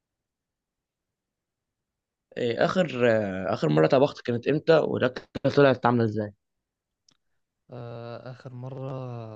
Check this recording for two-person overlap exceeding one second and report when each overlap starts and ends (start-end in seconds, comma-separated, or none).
none